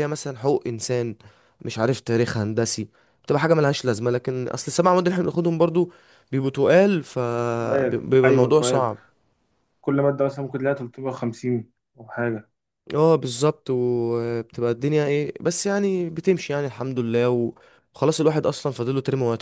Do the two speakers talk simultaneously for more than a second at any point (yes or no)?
yes